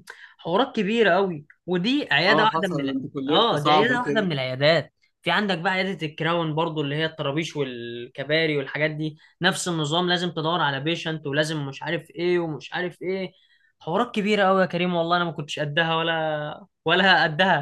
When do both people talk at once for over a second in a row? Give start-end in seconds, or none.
2.3-4.4